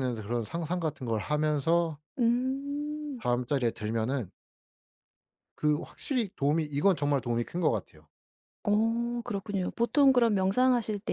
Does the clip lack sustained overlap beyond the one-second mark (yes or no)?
yes